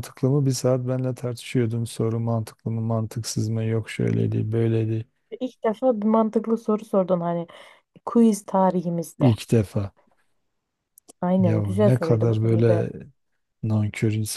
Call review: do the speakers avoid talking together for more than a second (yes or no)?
no